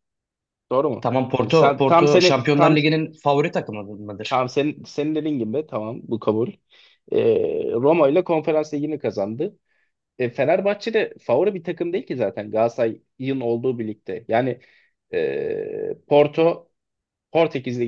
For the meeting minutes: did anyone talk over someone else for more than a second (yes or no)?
yes